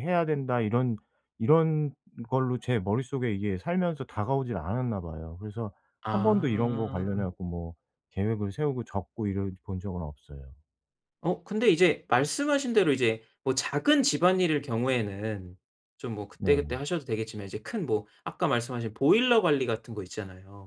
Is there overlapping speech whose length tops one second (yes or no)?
yes